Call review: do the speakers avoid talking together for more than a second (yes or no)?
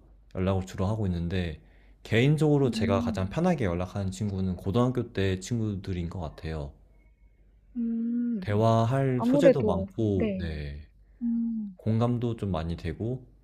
no